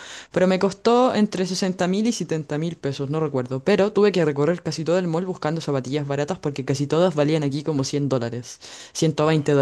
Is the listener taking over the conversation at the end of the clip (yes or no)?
no